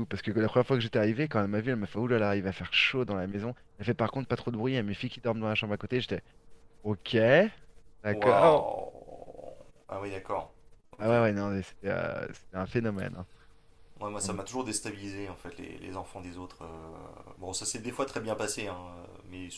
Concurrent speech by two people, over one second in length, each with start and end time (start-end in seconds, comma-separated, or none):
none